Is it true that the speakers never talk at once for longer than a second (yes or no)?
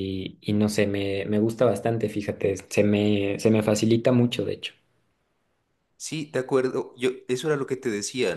yes